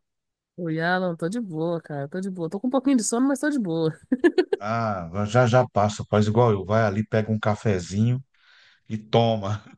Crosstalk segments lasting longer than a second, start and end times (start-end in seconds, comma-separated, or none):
none